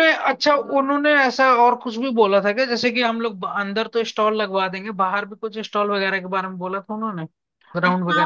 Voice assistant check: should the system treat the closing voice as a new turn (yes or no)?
yes